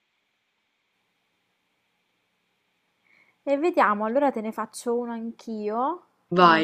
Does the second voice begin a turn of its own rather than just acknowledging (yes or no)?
no